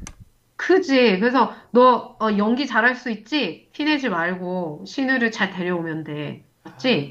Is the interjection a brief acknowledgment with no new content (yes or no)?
no